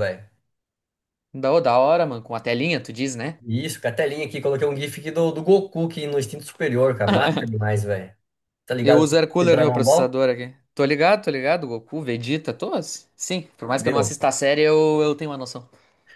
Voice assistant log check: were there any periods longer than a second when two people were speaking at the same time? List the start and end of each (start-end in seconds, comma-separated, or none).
8.8-10.2